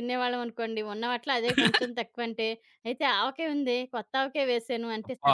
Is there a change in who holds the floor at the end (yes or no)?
no